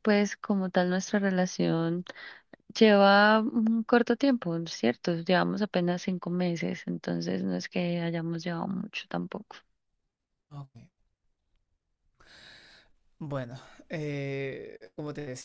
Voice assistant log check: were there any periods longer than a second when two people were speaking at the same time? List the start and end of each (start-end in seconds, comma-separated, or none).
none